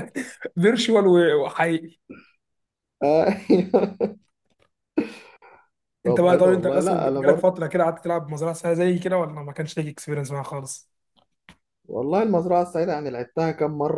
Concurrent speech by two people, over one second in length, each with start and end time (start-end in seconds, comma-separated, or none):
6.1-7.5